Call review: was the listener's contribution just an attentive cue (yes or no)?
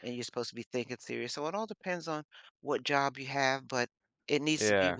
yes